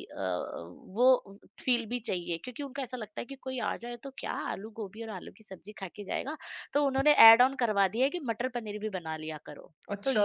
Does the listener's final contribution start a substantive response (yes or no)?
yes